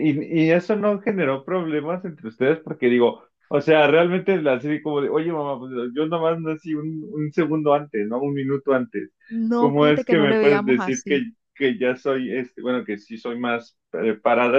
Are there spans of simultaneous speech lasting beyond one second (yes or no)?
yes